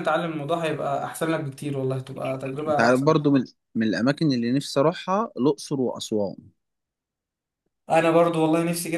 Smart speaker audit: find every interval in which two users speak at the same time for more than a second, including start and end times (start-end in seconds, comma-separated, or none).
none